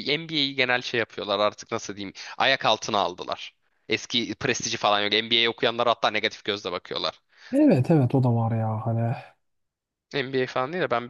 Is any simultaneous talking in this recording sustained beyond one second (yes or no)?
no